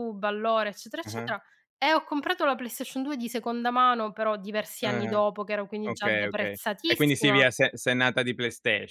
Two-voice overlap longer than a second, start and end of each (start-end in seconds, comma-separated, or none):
5.8-7.5